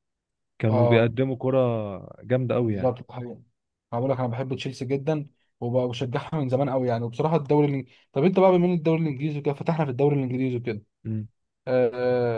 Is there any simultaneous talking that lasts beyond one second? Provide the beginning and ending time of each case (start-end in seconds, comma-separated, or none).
none